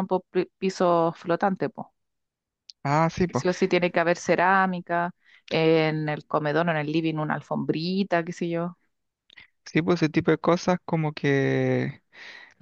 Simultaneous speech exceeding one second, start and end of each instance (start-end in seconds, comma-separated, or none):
none